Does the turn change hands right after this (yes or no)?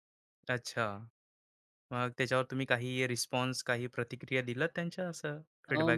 yes